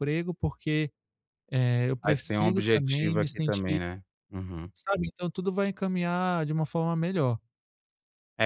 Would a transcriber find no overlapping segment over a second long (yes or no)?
no